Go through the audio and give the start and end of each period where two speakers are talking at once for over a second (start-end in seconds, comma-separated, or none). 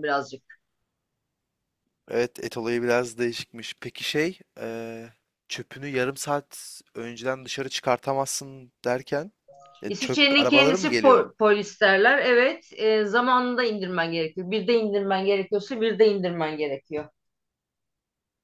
9.9-11.3